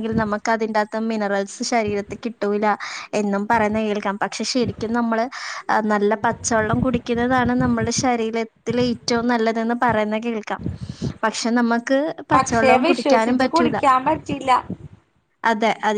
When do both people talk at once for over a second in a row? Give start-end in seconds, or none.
12.3-13.8